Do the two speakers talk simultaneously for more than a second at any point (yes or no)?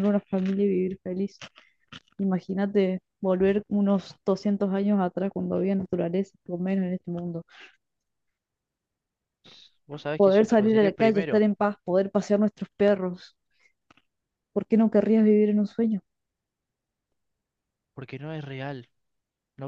yes